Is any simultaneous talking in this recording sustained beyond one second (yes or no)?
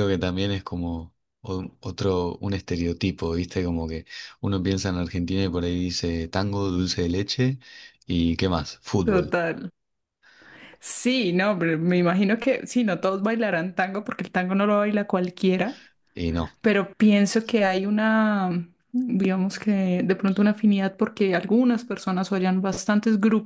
no